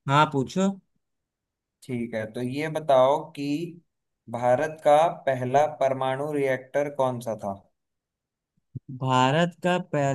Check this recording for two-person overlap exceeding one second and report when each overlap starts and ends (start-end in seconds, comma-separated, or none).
none